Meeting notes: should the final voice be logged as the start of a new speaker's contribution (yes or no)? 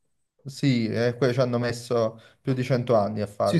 yes